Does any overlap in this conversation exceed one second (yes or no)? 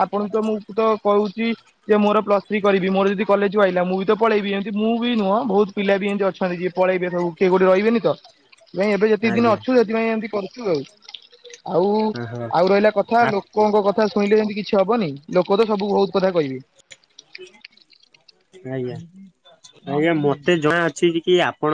no